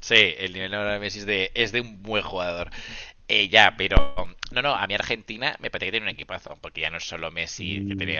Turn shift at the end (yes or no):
no